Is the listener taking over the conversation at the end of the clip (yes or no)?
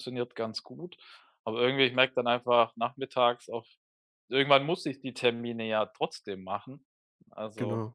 no